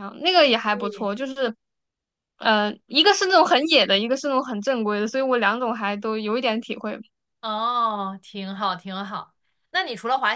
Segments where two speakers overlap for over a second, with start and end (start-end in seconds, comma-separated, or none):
none